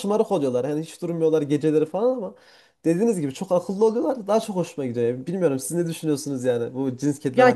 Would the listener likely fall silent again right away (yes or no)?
no